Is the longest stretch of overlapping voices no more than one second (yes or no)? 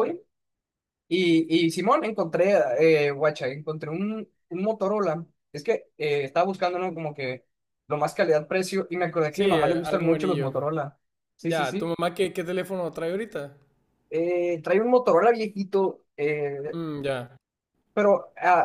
no